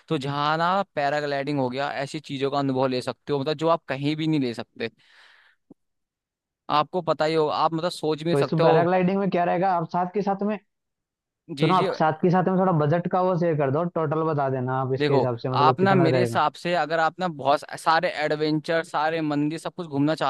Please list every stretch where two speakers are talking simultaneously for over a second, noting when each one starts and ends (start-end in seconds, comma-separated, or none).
15.0-16.4